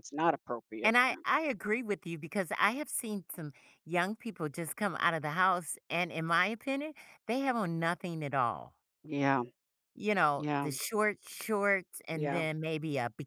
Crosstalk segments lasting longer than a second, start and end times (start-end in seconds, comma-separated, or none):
none